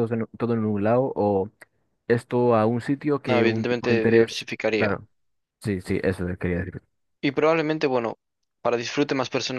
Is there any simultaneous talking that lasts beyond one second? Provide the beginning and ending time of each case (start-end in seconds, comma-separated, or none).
3.3-5.0